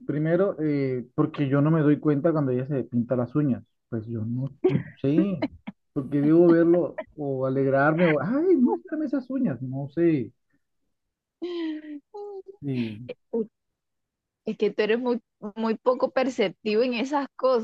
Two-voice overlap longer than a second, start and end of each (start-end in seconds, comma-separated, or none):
none